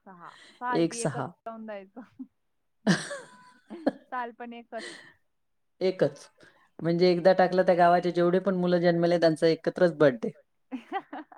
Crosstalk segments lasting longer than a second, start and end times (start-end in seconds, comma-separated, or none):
none